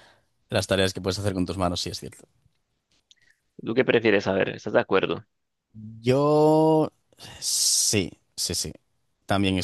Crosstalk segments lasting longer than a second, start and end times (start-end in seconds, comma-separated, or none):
none